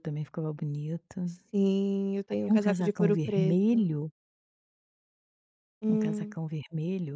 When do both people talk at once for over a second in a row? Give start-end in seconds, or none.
2.3-3.9